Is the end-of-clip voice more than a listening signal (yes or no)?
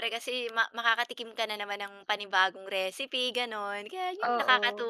no